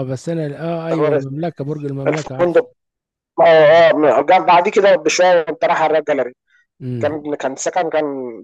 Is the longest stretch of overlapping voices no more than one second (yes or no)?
yes